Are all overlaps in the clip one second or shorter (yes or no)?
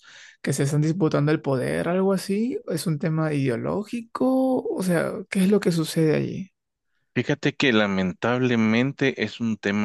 yes